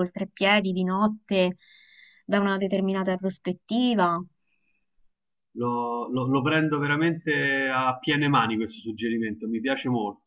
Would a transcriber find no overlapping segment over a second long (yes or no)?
yes